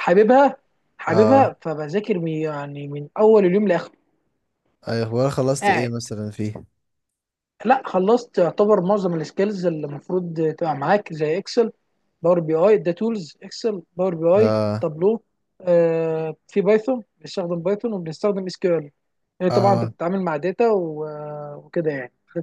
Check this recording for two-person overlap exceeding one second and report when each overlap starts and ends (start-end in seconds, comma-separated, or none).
none